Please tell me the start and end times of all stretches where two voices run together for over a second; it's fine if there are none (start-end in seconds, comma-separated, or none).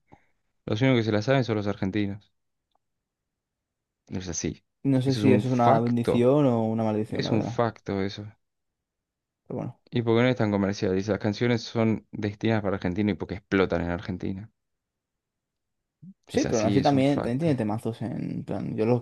5.0-6.3, 16.3-17.6